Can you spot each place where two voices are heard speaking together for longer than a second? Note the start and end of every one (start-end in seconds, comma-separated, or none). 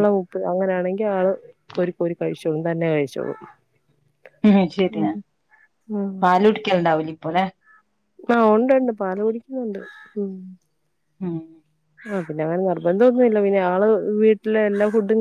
none